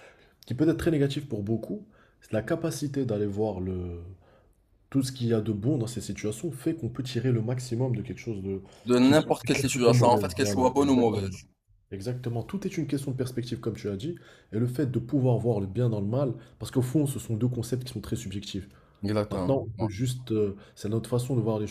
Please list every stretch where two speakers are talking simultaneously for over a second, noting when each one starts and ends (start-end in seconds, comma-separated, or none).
9.0-11.3